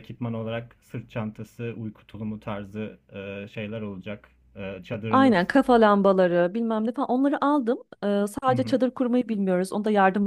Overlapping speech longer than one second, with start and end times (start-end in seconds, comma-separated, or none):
none